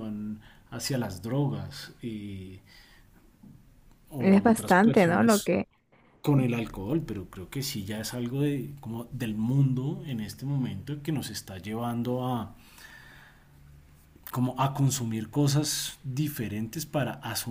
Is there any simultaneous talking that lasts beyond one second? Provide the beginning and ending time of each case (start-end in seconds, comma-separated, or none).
4.2-5.5